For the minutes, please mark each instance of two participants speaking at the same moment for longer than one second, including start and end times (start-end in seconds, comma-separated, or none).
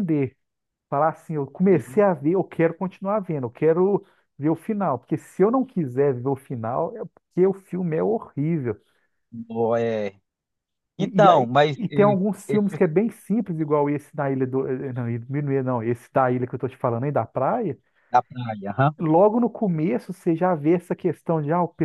11.0-12.8